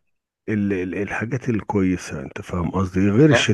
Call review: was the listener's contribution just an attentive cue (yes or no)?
yes